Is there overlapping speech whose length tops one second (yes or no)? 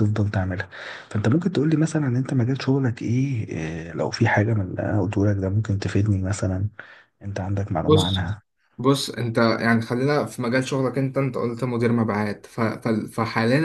no